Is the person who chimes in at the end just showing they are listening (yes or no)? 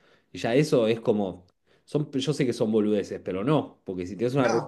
yes